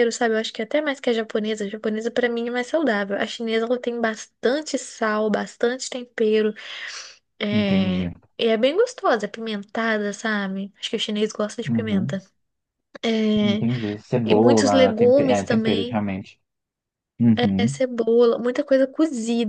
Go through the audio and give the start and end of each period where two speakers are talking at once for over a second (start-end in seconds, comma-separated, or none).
14.3-16.0